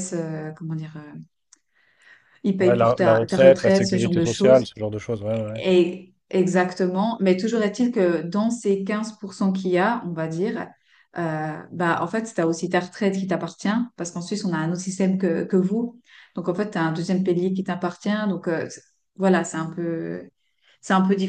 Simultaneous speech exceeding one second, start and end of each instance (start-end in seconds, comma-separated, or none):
2.6-4.7